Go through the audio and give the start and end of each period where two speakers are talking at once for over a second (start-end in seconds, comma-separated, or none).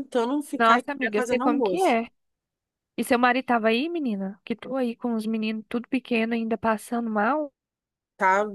0.6-1.9